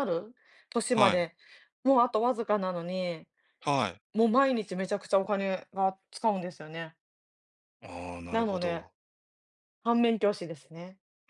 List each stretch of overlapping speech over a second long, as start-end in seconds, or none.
none